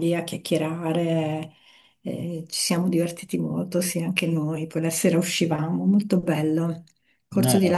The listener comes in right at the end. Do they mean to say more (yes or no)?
no